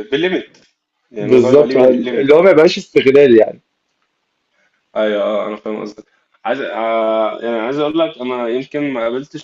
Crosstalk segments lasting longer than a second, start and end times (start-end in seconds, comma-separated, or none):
1.2-2.5